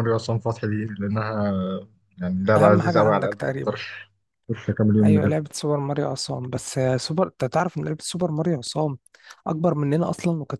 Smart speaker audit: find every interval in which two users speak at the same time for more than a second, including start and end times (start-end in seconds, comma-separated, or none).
2.6-3.8